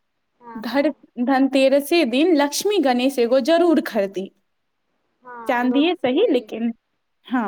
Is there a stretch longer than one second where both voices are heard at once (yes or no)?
yes